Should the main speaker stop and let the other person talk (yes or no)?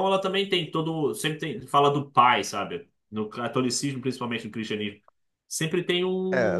yes